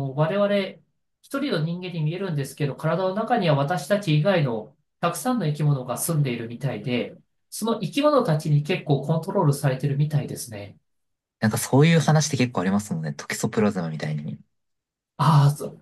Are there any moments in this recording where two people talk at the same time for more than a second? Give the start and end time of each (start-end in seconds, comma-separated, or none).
none